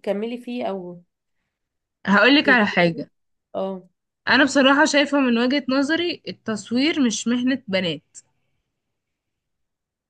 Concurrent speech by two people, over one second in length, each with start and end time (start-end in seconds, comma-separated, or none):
none